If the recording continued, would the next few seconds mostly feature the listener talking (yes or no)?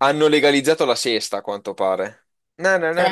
yes